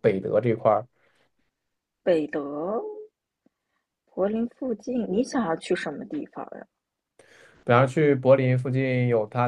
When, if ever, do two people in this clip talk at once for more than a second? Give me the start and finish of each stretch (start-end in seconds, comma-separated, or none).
none